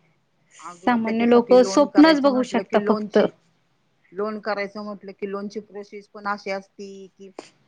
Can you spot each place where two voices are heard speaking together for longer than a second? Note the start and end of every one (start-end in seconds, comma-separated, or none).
0.8-3.2